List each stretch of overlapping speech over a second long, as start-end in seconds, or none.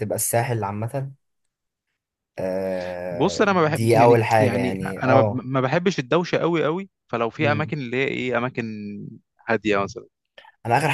3.1-5.5